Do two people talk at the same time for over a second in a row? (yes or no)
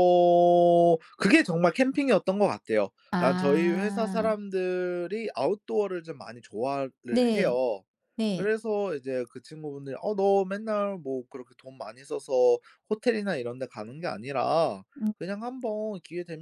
yes